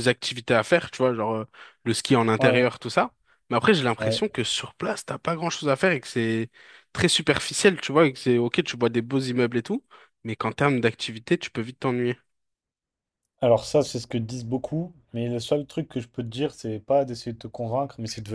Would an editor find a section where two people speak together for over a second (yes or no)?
no